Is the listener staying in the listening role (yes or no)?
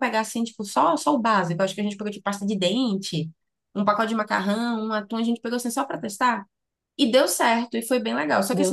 yes